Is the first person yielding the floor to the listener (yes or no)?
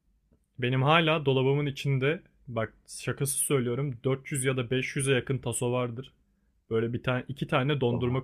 no